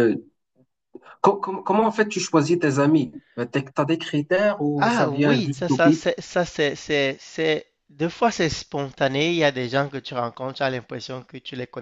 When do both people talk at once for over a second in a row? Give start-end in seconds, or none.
4.8-6.0